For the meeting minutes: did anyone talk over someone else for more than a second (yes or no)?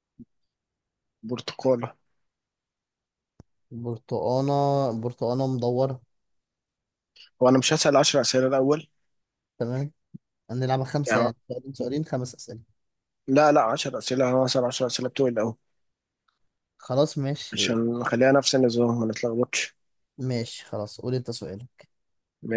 no